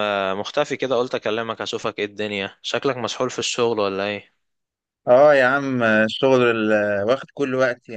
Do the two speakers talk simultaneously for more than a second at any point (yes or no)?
no